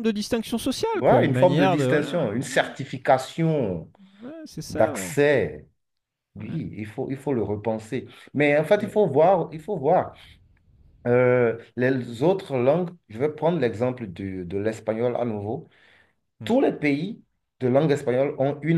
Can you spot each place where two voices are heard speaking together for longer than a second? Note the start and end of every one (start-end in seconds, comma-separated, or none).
0.9-2.7